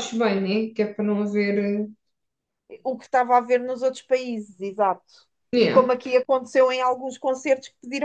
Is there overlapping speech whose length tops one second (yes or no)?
no